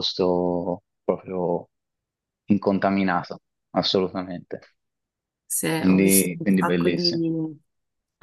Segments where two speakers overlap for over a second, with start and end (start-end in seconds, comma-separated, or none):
5.8-7.1